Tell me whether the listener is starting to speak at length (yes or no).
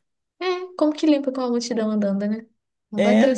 yes